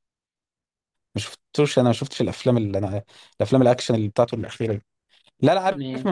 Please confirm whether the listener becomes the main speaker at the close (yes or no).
no